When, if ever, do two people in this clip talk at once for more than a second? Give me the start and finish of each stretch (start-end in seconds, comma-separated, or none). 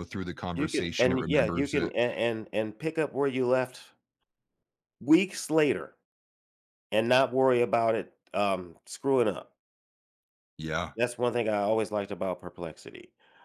0.5-1.9